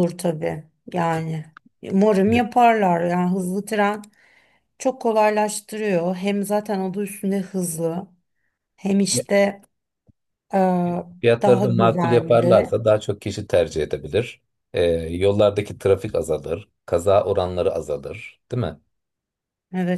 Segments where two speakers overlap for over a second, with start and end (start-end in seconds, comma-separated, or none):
11.4-12.7